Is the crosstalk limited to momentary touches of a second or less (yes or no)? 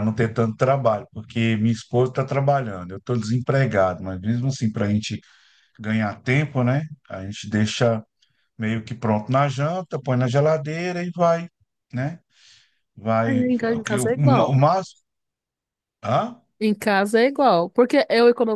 no